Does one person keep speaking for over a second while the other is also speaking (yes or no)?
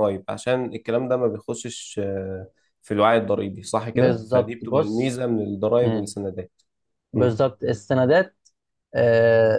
yes